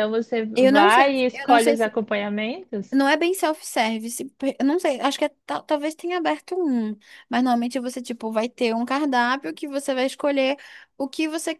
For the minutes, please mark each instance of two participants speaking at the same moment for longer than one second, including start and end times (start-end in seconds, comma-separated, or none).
0.6-1.9